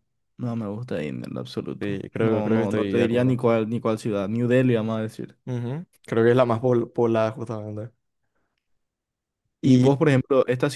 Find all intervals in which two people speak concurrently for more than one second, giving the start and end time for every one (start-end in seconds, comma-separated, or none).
1.8-3.4